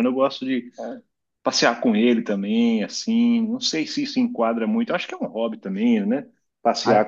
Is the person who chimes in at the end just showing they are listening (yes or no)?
yes